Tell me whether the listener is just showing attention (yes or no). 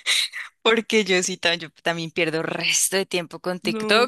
yes